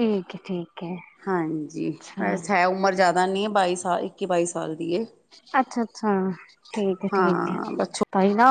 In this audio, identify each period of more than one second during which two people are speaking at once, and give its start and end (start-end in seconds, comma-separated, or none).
none